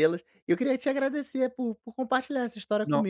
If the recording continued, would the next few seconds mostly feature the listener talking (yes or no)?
no